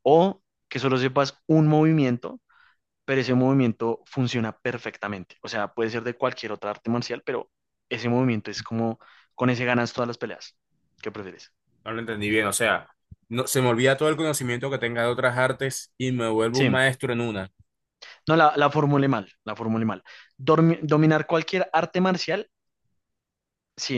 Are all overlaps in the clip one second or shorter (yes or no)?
yes